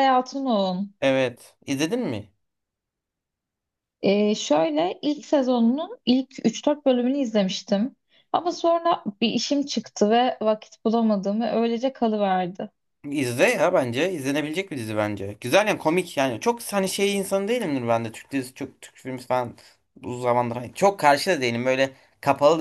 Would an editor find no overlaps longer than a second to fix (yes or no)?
yes